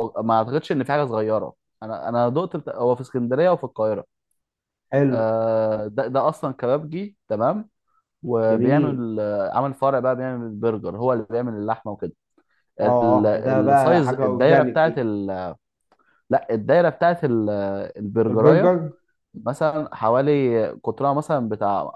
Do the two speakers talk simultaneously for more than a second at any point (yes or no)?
yes